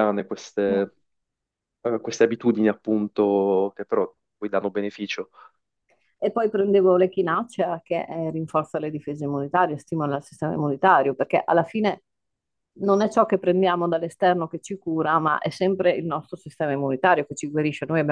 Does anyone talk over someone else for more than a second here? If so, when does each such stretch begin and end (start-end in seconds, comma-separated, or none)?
none